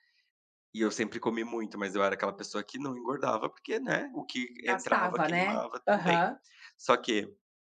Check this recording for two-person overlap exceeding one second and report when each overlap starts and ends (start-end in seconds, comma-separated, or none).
4.7-6.3